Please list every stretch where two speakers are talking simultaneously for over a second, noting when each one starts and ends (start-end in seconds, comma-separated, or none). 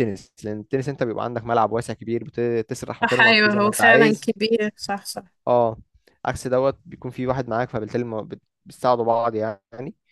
3.0-4.4